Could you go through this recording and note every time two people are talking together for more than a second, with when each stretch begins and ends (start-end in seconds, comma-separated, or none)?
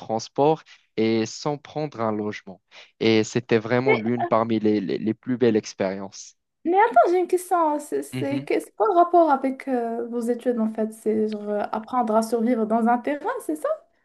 none